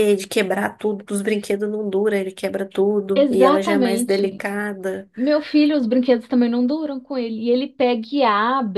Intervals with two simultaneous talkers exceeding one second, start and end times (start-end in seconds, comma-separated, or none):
3.1-4.5